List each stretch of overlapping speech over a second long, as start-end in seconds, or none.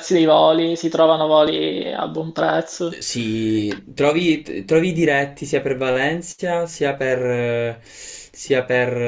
none